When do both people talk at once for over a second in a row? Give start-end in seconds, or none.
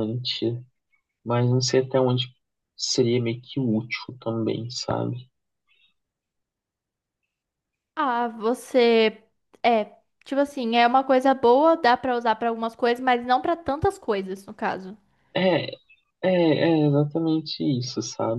none